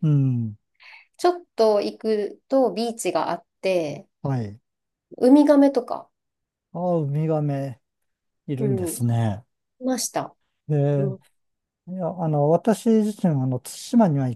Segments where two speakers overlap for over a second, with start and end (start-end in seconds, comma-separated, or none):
none